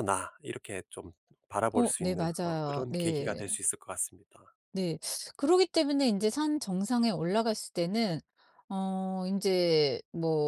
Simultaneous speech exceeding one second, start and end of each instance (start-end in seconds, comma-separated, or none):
1.7-3.6